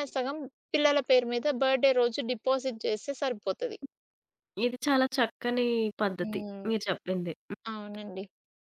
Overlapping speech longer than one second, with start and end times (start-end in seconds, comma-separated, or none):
none